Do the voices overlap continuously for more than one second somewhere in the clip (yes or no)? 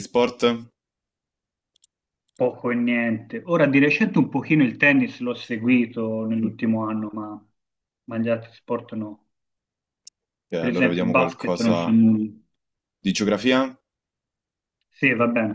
yes